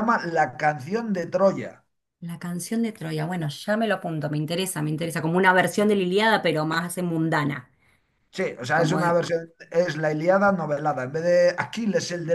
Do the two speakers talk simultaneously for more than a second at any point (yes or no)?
no